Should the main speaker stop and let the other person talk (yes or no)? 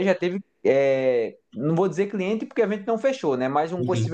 no